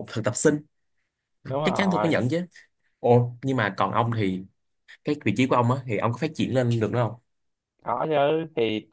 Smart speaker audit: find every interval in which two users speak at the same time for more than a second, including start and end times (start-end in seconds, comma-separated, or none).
none